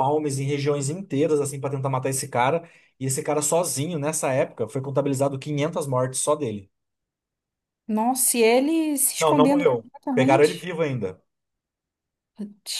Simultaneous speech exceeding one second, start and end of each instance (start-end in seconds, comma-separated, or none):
9.2-10.7